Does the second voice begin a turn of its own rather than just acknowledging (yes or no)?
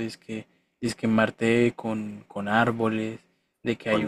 no